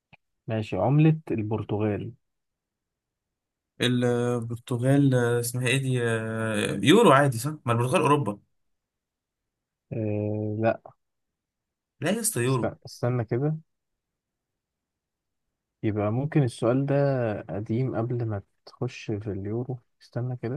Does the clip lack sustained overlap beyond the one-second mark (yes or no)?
yes